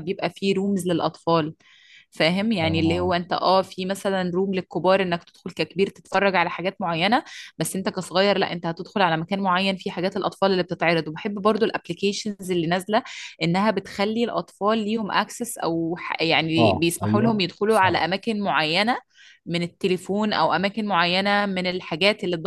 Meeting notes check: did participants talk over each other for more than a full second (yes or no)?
yes